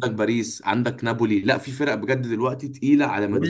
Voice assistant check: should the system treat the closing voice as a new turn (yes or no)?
yes